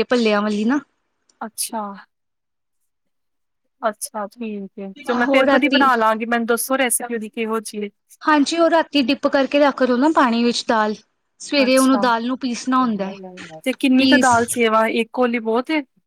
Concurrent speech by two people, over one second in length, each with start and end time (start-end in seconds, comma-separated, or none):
none